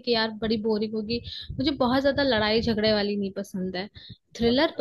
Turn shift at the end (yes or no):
no